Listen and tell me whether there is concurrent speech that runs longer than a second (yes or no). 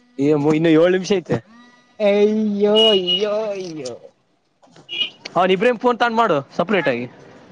no